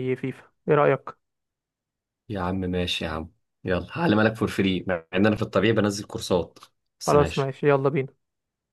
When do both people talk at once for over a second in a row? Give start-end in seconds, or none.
none